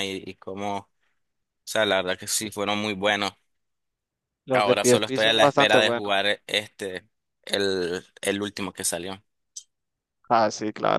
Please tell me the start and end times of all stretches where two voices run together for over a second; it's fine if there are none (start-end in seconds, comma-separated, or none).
4.5-6.1